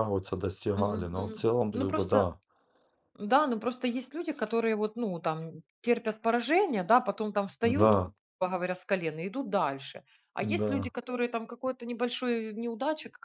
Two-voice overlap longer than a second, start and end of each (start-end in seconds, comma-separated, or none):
0.8-2.3